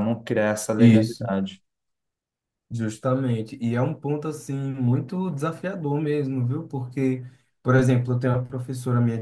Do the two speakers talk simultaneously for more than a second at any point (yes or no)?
no